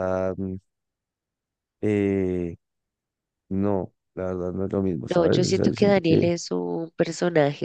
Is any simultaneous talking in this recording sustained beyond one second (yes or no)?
yes